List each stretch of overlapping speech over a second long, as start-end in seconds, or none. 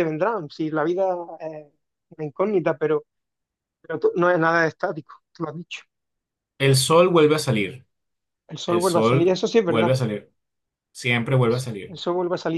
8.7-9.9